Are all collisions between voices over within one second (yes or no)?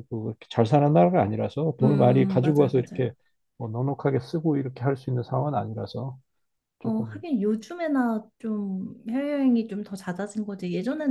no